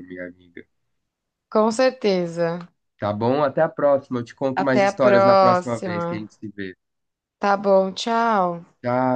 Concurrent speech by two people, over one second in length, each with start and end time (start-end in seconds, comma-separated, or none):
4.5-6.3